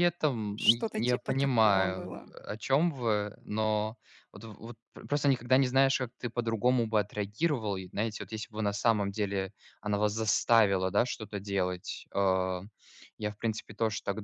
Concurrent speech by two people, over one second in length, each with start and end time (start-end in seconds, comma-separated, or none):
0.6-2.3